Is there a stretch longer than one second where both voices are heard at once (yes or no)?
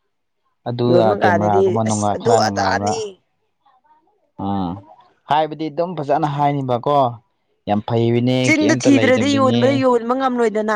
yes